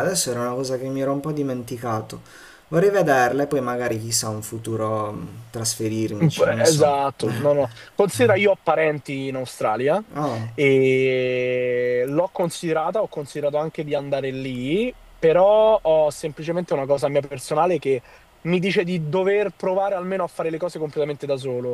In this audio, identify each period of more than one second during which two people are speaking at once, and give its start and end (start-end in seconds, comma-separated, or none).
none